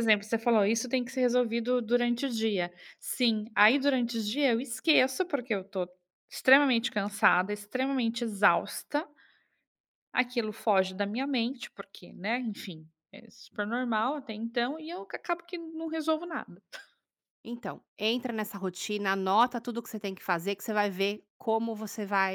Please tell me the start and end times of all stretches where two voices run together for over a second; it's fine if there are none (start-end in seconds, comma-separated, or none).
none